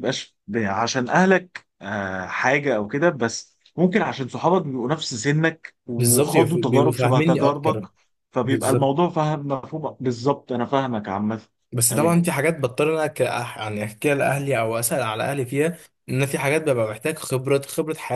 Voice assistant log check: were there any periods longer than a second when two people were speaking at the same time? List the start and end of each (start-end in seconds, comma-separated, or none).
6.0-7.8